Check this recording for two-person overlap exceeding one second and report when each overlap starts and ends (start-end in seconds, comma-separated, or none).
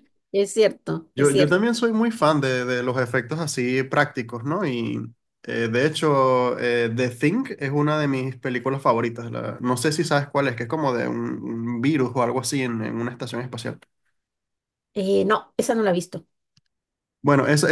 none